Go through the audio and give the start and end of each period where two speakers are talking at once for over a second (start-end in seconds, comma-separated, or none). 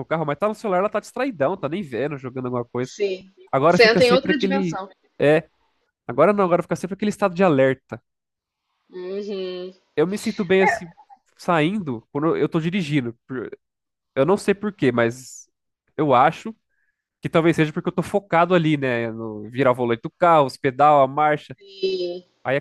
3.5-4.8